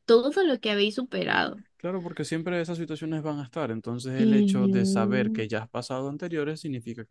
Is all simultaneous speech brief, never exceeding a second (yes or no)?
no